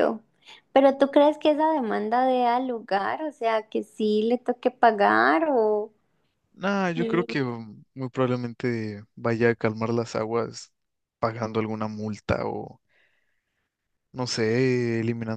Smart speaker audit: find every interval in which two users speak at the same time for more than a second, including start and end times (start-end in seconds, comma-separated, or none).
none